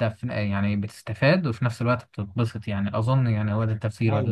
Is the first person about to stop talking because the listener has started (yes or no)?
yes